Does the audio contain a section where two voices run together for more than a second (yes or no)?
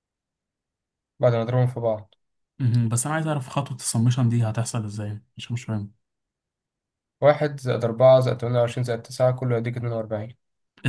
no